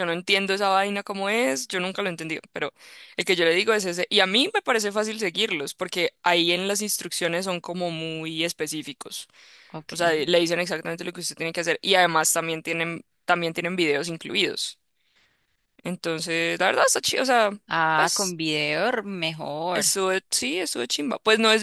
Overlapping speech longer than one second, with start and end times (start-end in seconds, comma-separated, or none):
none